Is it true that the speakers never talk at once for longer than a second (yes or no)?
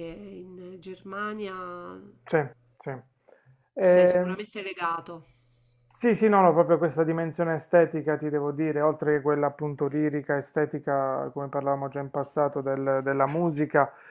yes